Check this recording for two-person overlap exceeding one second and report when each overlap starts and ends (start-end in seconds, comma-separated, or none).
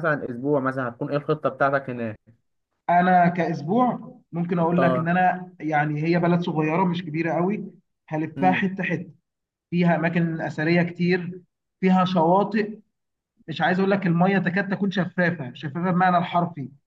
none